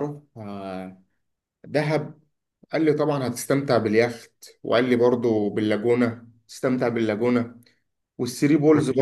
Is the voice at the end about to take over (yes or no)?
no